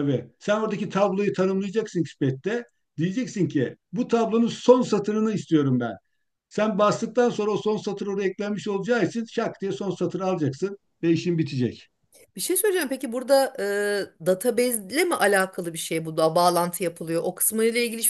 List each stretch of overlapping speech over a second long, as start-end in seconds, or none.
none